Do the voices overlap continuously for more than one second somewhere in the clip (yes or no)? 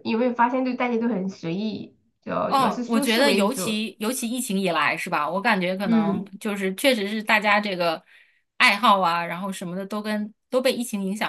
yes